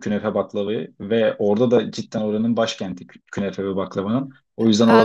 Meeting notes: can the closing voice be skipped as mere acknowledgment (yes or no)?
no